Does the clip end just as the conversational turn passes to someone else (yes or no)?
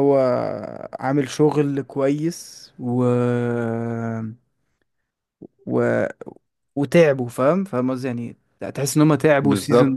no